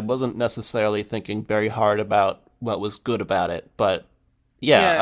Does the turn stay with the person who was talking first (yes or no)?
no